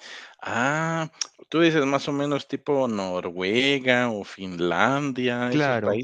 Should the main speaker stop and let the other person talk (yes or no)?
yes